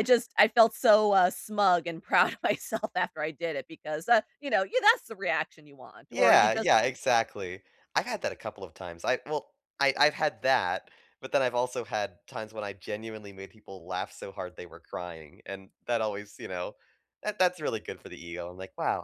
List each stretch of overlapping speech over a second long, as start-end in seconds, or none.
none